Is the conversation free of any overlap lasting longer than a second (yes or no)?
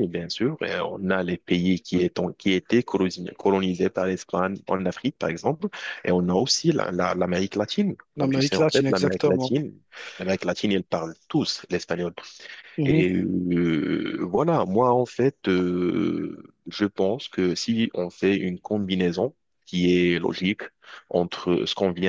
no